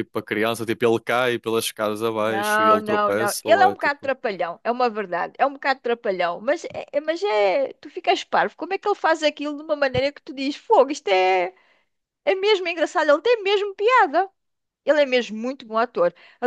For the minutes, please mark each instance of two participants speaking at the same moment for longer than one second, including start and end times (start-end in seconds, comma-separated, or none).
2.2-4.1